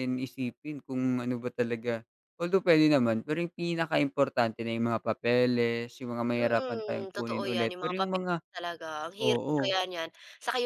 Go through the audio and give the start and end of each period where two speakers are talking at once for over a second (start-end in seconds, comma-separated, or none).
6.4-8.3